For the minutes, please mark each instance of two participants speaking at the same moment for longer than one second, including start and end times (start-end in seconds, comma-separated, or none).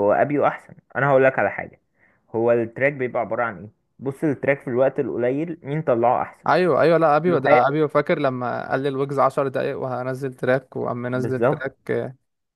none